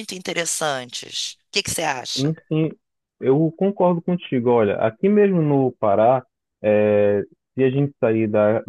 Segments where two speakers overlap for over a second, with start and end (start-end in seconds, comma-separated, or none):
none